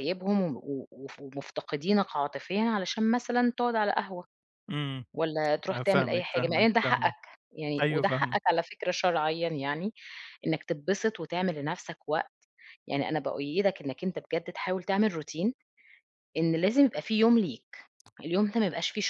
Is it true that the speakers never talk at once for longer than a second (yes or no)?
no